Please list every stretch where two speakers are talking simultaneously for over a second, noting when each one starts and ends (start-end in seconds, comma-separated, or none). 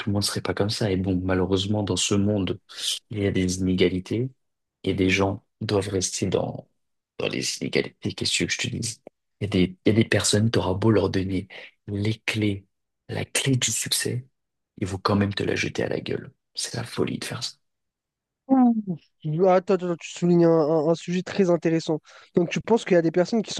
none